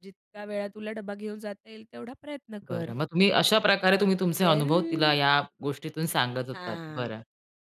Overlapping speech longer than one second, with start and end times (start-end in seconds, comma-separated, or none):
none